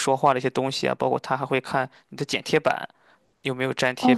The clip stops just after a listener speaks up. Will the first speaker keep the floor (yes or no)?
no